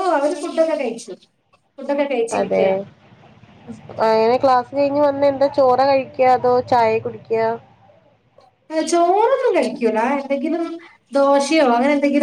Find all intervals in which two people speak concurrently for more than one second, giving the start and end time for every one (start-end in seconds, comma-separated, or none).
none